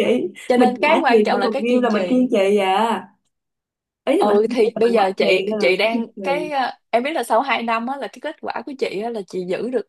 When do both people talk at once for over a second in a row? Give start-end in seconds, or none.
0.6-2.2, 4.2-6.2